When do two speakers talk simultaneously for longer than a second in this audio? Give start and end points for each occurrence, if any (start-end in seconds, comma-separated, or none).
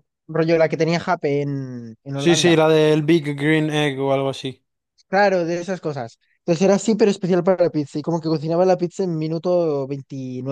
none